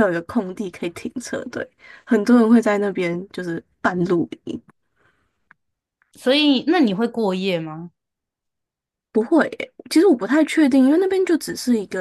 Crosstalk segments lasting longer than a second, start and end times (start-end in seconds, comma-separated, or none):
none